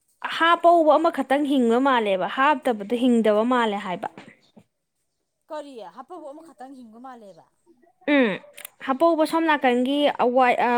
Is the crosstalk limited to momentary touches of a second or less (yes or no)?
yes